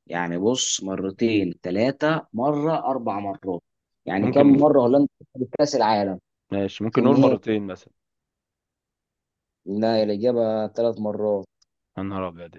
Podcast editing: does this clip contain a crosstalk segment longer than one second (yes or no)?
no